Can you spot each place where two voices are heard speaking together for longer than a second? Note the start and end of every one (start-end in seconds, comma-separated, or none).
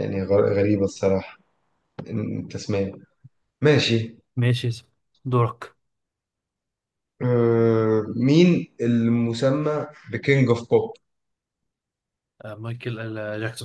none